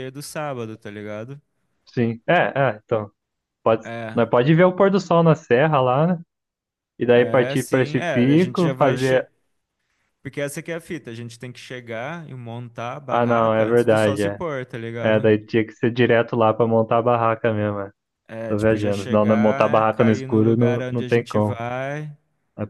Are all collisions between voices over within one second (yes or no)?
no